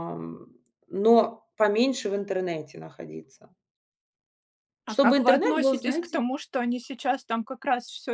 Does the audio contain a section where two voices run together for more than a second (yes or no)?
yes